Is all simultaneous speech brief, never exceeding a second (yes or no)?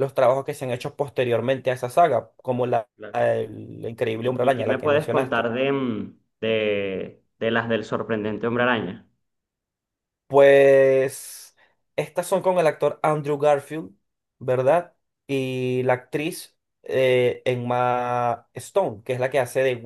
no